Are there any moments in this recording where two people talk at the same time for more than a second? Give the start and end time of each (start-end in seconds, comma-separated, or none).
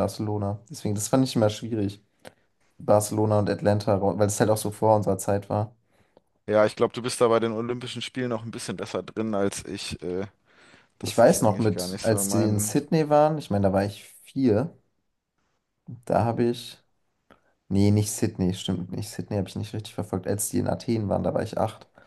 11.0-12.8